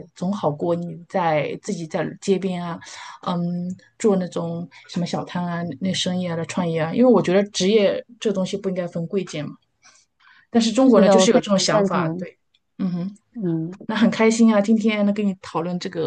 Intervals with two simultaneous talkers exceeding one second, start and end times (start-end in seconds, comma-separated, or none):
10.8-12.2